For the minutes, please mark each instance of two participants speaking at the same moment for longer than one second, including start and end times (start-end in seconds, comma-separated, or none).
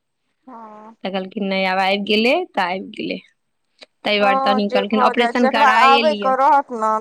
4.2-6.3